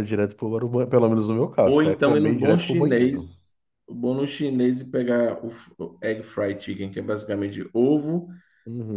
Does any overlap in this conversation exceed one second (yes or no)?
yes